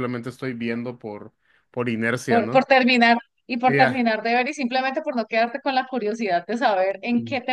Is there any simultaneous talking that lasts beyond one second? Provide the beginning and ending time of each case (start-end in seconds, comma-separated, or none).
none